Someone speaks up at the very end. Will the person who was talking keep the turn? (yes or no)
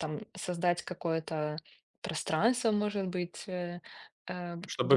no